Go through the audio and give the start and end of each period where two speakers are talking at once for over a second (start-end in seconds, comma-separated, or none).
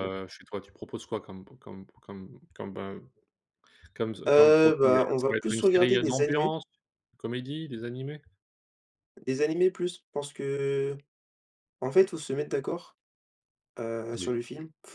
4.3-6.5